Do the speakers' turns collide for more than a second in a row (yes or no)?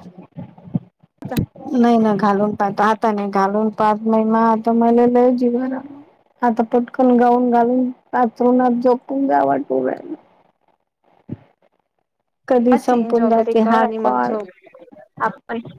yes